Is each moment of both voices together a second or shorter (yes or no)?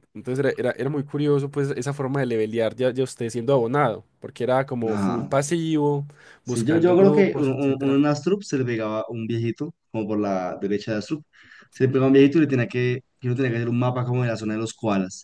no